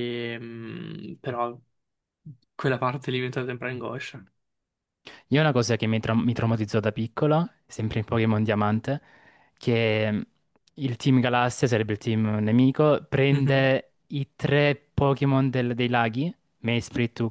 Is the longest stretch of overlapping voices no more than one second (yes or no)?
yes